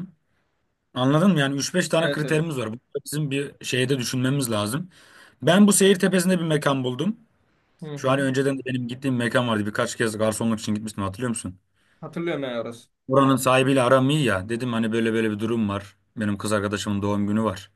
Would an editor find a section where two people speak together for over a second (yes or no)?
no